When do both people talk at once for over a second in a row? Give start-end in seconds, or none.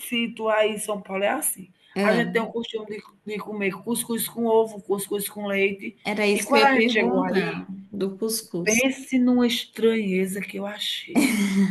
6.3-7.6